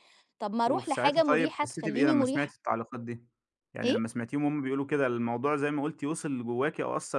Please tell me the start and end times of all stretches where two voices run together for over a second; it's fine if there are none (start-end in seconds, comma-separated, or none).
0.7-2.5